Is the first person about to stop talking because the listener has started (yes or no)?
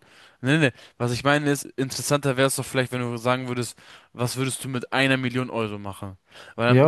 no